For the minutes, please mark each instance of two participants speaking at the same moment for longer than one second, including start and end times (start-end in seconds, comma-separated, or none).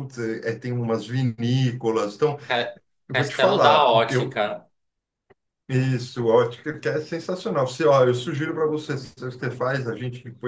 3.1-4.4